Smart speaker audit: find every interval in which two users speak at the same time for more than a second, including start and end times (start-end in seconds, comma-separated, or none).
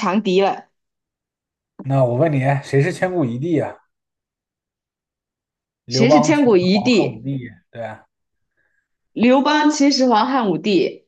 5.9-7.2